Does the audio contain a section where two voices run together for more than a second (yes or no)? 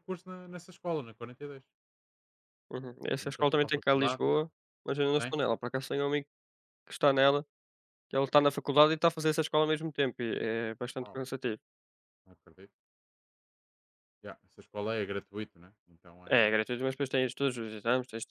yes